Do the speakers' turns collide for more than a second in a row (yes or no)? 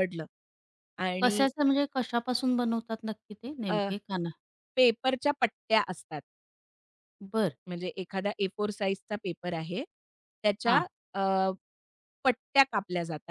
no